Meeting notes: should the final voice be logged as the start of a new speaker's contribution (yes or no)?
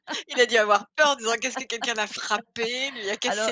yes